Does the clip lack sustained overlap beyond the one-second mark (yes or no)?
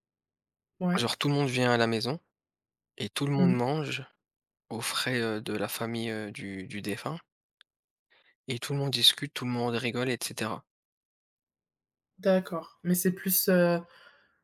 yes